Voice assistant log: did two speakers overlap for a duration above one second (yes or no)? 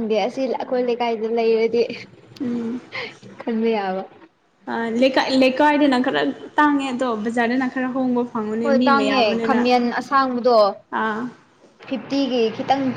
no